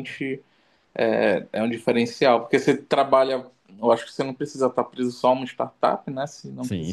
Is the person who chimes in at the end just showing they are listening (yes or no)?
no